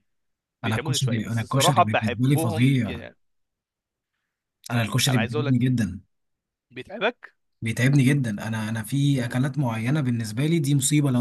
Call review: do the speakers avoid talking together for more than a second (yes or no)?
no